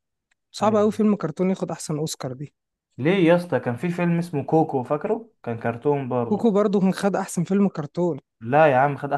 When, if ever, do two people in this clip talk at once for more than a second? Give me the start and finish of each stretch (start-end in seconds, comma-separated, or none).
none